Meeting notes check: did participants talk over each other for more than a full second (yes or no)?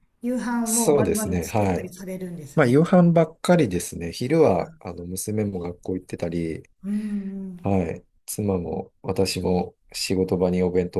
yes